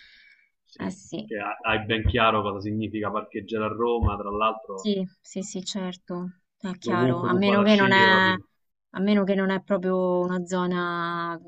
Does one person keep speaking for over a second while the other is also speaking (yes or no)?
yes